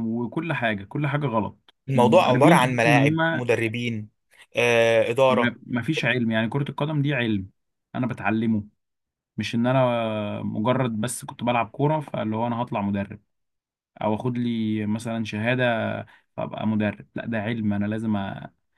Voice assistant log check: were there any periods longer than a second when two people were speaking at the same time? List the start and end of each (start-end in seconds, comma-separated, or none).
1.9-3.4